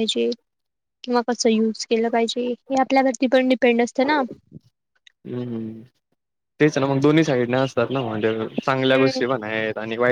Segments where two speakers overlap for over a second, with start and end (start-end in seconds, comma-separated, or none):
none